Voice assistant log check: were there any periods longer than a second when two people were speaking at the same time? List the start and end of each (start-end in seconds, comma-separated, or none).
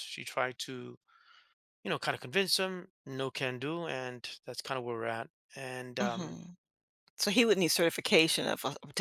none